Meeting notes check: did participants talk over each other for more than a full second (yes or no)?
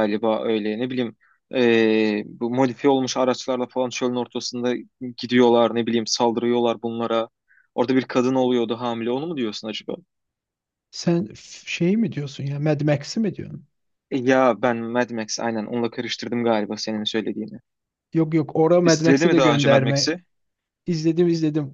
yes